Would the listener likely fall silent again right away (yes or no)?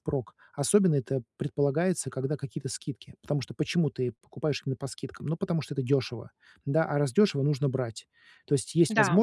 yes